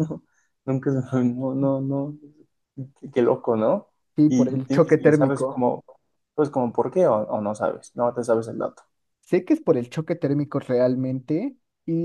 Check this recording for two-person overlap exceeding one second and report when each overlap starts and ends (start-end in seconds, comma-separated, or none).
4.3-5.7